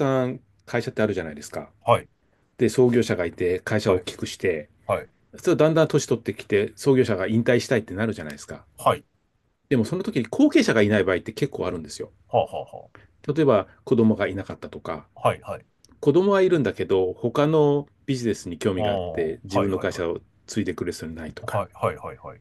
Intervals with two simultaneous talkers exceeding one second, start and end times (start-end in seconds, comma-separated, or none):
18.8-20.1